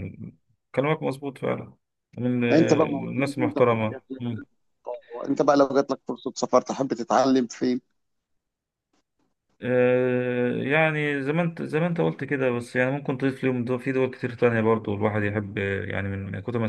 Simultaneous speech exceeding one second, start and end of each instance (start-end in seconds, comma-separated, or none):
2.5-4.3